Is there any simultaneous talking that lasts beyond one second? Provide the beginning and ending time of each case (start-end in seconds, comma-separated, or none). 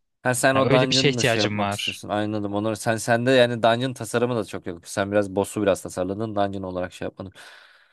0.5-2.0